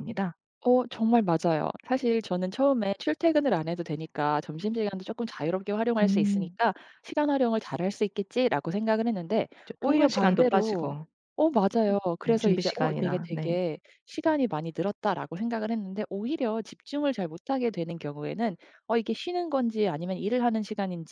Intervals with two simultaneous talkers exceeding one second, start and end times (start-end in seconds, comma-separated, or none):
9.7-11.0, 12.2-13.6